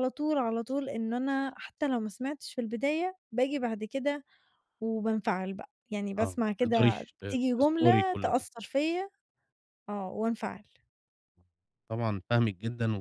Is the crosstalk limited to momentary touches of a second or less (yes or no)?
no